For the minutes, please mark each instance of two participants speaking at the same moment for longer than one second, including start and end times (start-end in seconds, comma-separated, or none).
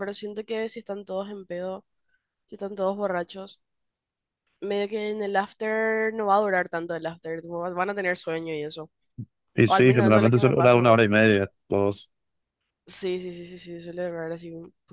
9.7-11.0